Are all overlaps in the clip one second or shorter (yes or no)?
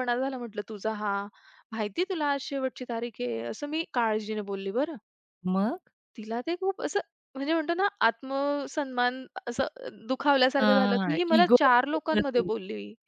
no